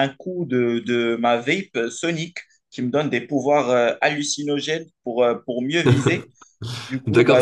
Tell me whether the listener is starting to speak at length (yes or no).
yes